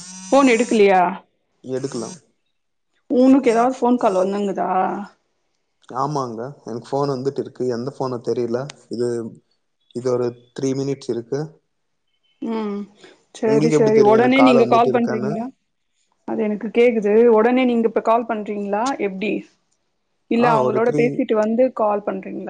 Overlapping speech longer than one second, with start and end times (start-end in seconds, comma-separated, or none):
13.5-15.3